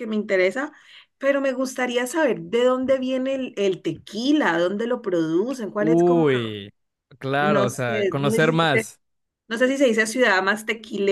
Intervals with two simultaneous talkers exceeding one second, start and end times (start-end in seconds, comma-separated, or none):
7.4-8.9